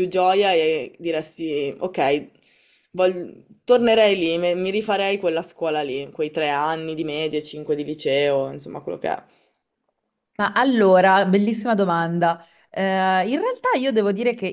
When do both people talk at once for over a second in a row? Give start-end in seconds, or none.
none